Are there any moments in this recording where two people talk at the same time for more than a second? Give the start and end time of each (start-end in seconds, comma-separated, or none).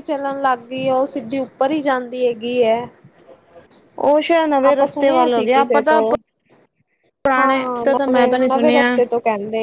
7.4-8.9